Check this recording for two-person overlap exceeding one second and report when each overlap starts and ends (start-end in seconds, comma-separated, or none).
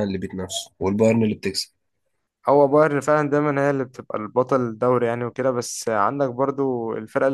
none